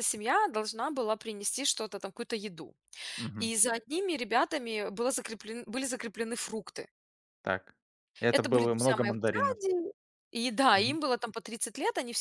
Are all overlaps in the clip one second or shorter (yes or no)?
no